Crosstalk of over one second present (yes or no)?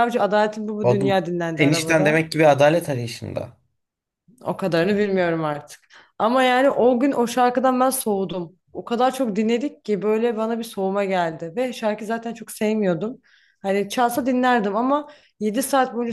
yes